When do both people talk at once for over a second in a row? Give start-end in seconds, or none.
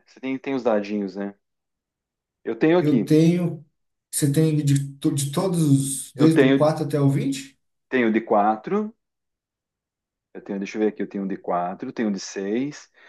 none